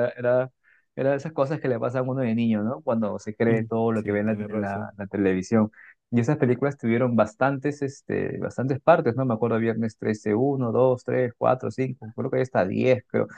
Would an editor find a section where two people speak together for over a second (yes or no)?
yes